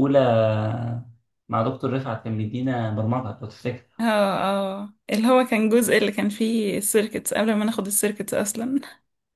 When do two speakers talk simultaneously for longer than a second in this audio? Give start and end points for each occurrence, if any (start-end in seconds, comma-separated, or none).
none